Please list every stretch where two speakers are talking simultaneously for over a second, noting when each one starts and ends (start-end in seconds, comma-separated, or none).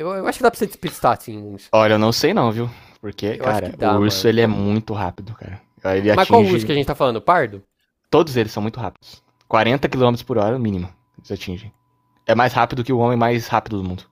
3.3-4.7